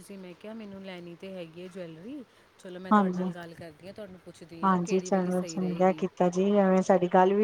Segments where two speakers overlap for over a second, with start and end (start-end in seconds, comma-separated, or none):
4.6-6.0